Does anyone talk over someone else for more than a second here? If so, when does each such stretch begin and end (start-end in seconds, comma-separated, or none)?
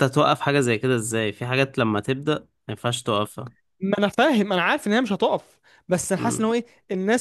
none